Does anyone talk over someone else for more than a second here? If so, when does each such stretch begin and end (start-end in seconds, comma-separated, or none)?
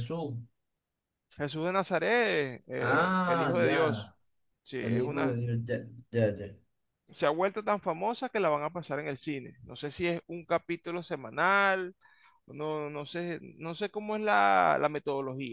2.8-4.1